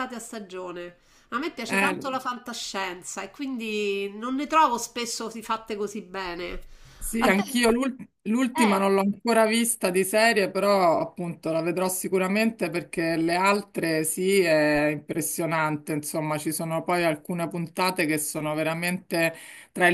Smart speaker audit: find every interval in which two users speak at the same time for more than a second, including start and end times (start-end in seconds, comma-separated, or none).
none